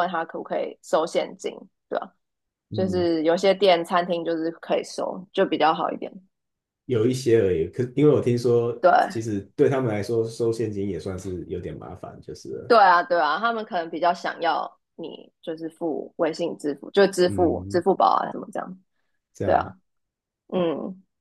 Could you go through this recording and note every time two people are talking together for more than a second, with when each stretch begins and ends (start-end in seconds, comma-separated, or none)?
none